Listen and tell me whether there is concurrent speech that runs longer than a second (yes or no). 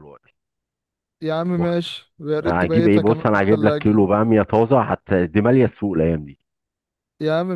yes